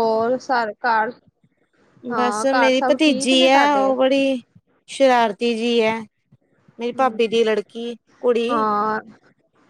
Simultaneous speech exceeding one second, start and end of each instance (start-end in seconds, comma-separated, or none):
2.1-3.9